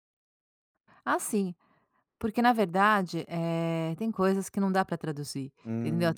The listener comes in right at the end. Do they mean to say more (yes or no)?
yes